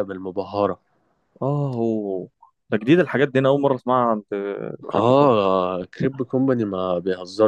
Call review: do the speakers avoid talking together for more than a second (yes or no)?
yes